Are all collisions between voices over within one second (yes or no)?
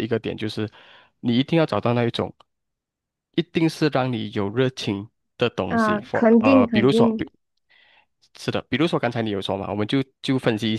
no